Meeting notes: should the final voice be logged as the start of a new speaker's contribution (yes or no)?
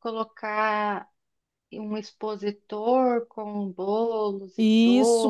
yes